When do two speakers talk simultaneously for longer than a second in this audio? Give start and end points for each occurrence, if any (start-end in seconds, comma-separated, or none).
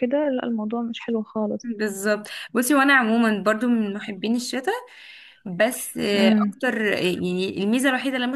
none